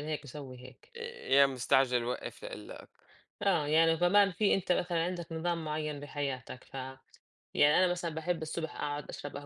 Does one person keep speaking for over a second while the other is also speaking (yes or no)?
no